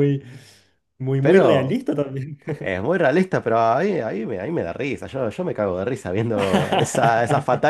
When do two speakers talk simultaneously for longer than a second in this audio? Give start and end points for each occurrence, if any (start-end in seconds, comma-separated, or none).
none